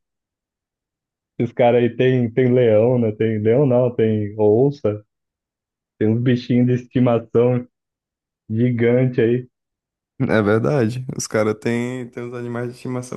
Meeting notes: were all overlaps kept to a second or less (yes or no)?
yes